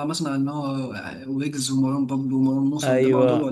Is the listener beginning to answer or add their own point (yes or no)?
yes